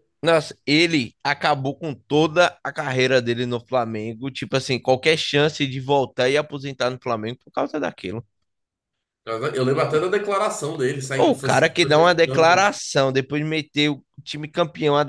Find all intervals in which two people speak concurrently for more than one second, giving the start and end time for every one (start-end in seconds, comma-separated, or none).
11.2-12.7